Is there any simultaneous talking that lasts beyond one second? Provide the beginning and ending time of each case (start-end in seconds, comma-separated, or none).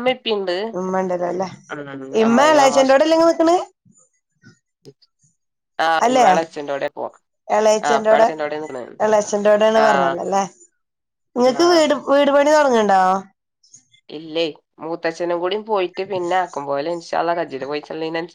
none